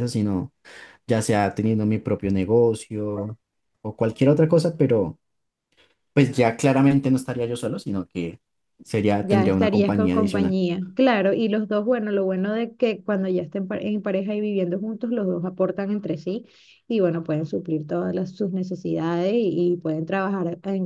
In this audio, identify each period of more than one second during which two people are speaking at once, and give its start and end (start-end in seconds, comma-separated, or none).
9.2-10.6